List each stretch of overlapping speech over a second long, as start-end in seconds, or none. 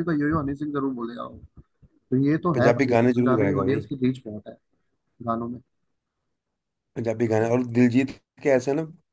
2.5-3.9